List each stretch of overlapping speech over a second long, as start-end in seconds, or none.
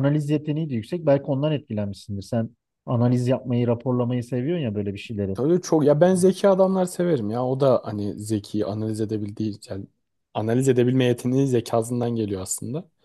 none